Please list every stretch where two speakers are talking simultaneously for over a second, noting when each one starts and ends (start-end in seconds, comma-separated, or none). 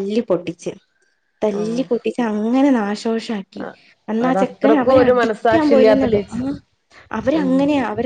4.3-6.4